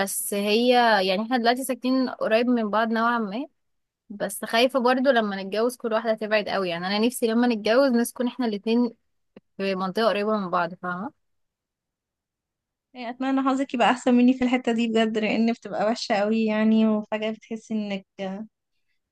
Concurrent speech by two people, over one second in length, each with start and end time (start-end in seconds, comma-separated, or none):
none